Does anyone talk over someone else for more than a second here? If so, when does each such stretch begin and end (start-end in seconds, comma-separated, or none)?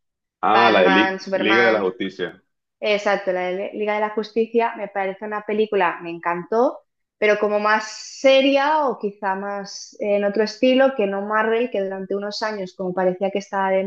0.5-1.9